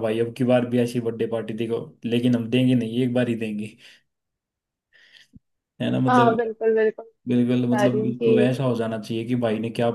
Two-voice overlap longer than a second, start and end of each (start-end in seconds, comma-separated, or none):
7.3-8.5